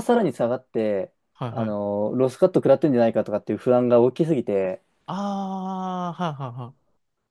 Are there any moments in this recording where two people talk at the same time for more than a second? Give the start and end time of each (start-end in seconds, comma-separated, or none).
none